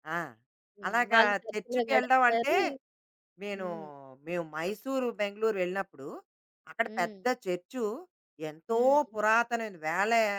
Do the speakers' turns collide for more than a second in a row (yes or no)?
yes